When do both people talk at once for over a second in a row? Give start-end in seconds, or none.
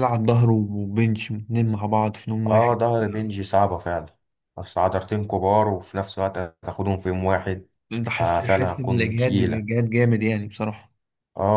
8.2-9.6